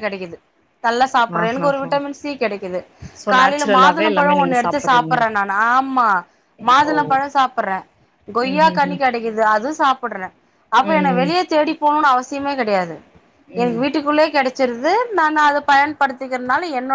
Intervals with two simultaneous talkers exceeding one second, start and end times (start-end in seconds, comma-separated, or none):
3.3-5.1